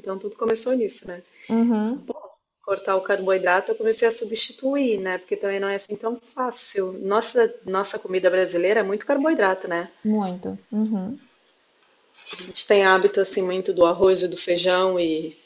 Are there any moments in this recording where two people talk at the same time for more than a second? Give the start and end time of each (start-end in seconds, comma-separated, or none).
none